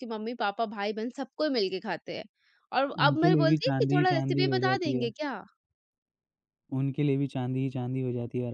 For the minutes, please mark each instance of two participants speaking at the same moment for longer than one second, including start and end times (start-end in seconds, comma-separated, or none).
3.0-5.1